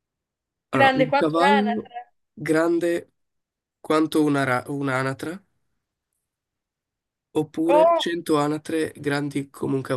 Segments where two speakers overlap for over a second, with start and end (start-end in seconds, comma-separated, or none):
0.7-1.9